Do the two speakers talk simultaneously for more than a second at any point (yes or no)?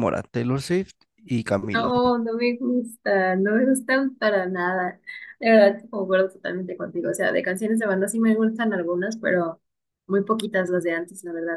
no